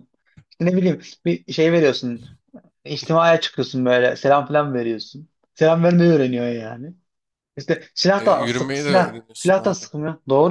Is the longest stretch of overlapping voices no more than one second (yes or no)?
no